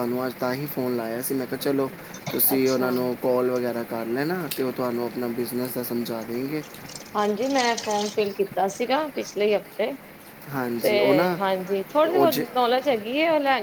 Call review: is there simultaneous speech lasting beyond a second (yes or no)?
no